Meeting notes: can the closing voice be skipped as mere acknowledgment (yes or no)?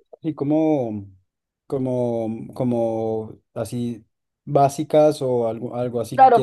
no